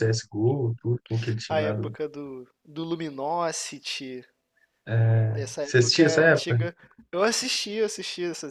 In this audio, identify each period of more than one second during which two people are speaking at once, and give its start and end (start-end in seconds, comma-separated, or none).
5.3-6.6